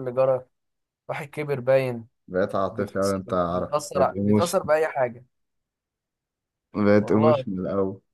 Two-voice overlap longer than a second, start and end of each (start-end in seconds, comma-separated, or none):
2.7-4.5